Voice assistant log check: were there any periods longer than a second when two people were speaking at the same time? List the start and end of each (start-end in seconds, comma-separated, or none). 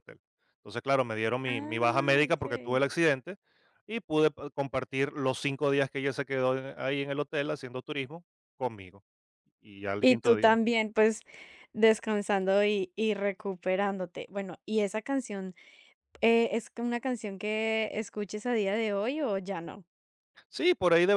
1.5-2.8